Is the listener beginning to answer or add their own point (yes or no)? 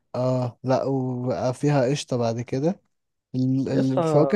no